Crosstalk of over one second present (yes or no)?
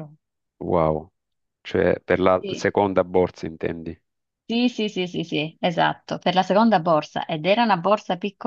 no